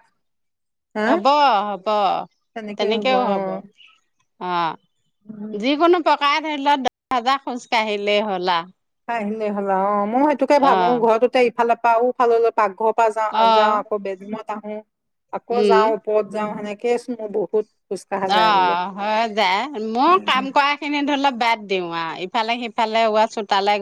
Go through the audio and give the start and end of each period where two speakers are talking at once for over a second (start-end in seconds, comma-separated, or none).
none